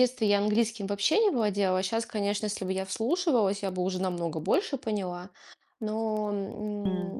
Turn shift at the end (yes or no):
no